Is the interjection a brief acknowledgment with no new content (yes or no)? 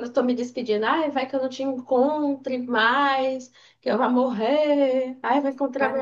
no